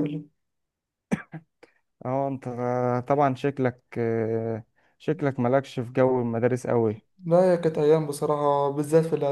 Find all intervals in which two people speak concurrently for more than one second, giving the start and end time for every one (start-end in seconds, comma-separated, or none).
none